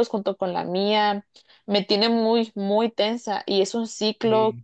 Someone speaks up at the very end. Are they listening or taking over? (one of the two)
listening